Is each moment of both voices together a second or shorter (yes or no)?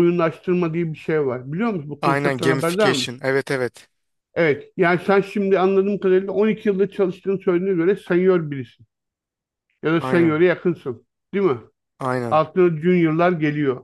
no